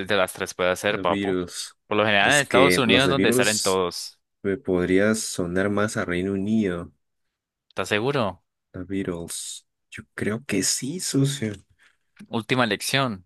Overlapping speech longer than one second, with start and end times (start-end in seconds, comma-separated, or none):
2.2-3.8